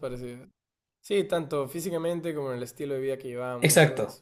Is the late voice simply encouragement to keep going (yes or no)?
no